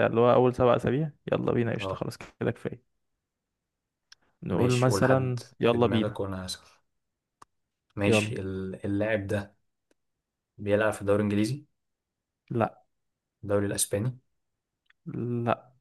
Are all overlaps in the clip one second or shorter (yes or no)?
no